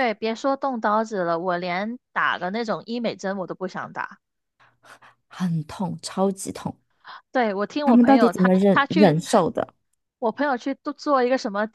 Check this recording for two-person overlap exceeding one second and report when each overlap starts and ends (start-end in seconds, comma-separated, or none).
7.8-9.2